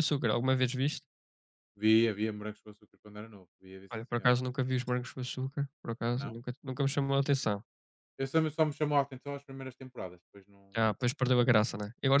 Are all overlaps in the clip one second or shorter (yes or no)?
yes